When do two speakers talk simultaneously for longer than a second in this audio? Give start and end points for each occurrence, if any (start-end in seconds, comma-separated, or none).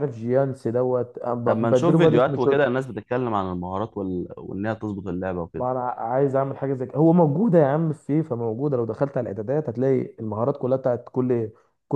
1.5-2.7